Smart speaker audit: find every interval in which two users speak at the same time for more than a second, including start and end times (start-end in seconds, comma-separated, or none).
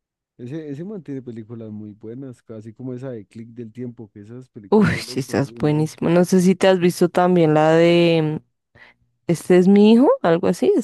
4.7-5.9